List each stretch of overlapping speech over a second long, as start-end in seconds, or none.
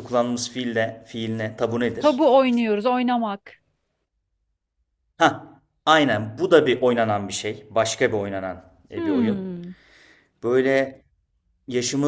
none